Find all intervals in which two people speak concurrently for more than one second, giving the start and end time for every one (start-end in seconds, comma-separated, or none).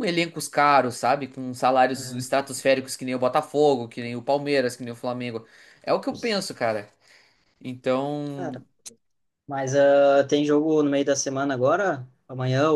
none